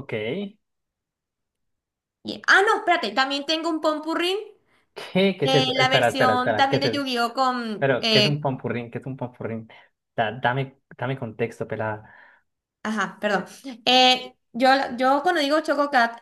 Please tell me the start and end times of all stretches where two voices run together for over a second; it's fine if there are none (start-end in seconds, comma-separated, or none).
5.4-7.0